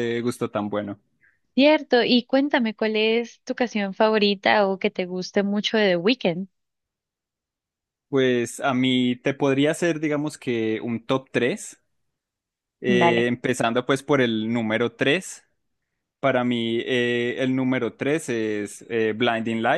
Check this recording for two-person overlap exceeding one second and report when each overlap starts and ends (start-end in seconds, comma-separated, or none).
none